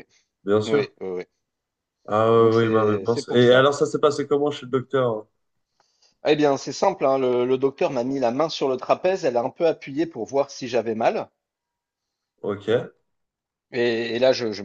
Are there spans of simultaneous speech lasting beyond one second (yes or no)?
yes